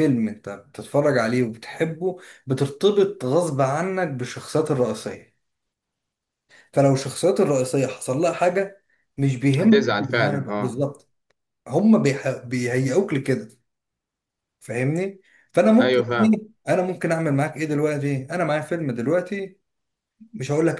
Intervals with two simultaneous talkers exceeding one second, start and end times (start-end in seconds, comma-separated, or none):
9.6-10.9